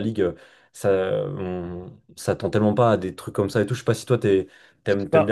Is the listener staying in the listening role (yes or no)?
yes